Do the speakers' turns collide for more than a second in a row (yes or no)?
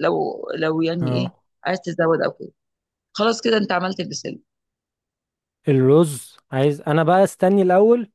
no